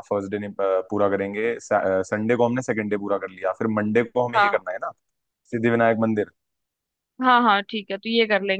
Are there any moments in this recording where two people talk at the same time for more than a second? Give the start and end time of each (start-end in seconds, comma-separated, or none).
none